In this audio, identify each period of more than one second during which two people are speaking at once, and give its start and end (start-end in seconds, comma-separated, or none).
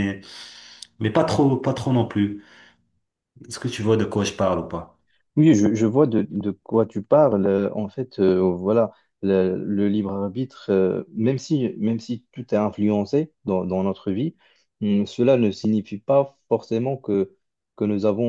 none